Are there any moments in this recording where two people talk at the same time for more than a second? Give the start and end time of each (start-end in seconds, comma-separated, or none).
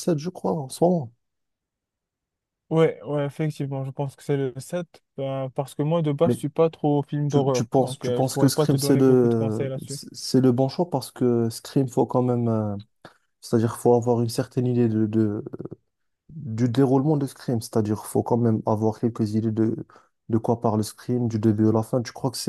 7.3-10.0